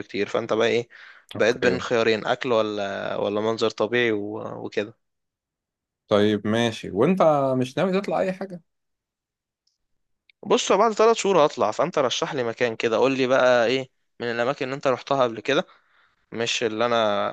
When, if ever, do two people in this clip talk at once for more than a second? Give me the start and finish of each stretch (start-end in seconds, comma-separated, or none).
none